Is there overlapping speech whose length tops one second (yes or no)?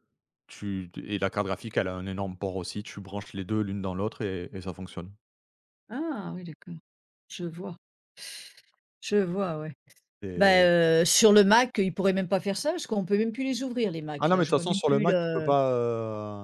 yes